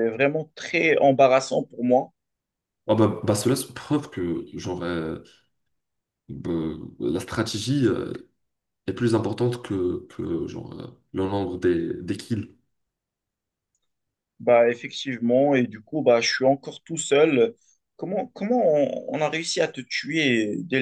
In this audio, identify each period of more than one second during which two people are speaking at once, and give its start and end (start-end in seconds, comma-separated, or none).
none